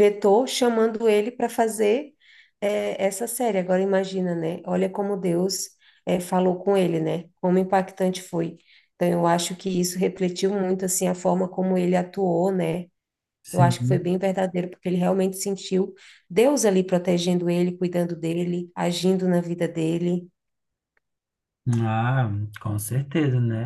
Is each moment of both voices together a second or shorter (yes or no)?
yes